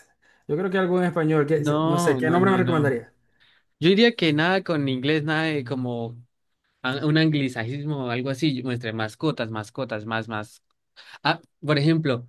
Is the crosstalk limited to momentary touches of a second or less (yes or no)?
no